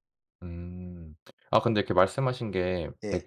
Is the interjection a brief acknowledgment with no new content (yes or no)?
yes